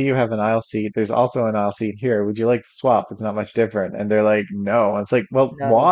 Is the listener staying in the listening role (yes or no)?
yes